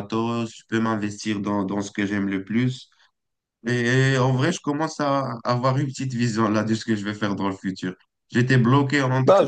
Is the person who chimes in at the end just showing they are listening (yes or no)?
yes